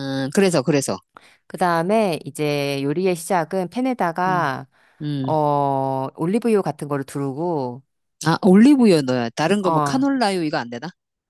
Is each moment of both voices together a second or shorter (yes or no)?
yes